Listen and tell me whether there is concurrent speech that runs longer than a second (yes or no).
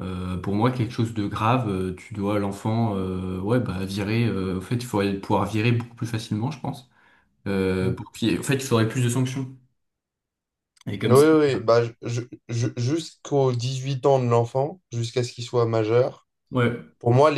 no